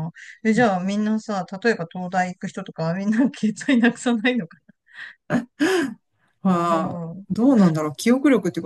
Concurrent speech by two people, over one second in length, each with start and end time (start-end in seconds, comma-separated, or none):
none